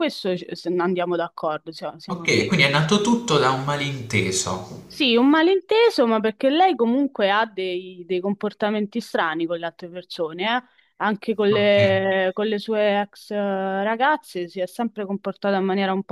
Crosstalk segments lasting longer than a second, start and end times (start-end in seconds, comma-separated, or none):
2.1-3.4